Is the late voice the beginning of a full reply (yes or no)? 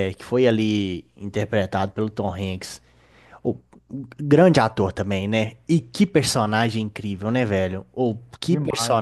no